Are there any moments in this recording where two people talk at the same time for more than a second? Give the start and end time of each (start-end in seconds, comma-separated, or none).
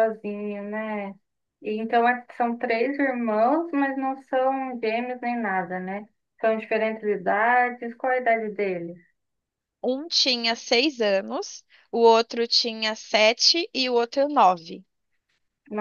none